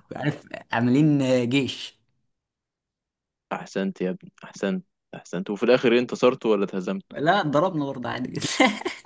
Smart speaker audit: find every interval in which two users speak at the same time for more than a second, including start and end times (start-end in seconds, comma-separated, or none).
none